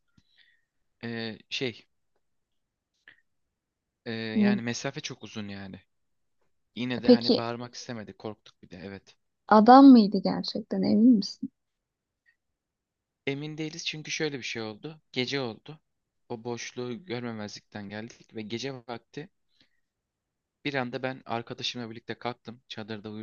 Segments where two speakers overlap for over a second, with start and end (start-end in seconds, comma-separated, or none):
none